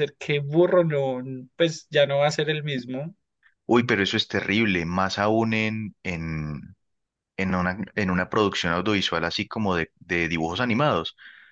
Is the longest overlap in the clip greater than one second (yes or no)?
no